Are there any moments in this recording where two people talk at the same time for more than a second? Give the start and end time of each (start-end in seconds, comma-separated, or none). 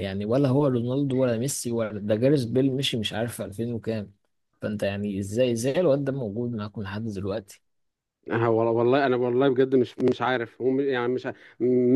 none